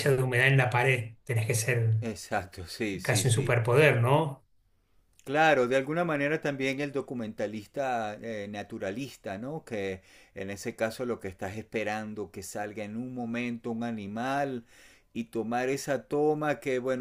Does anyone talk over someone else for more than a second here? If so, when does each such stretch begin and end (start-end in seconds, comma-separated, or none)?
none